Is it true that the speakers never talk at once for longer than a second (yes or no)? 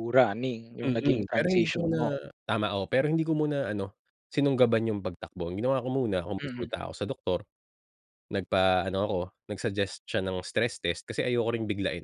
no